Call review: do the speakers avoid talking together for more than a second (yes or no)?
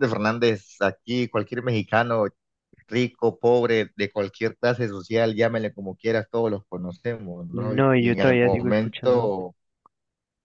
no